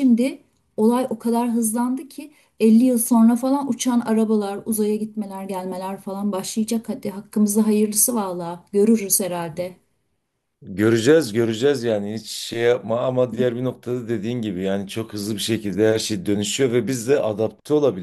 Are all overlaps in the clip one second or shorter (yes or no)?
yes